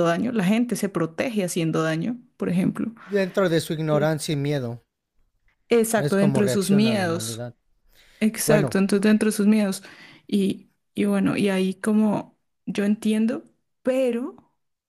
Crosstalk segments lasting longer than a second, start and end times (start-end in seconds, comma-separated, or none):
6.0-7.5